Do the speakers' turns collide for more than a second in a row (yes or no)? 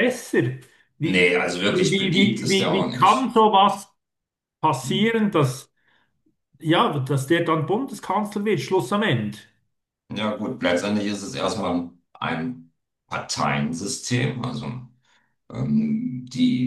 yes